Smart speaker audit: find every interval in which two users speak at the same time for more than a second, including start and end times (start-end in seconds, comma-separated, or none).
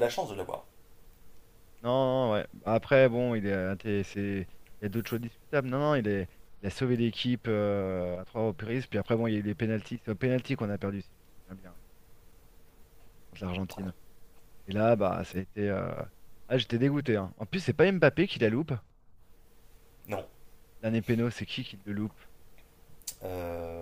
none